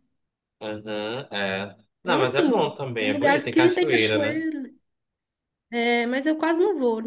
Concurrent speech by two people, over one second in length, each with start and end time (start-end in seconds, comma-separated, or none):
2.0-4.4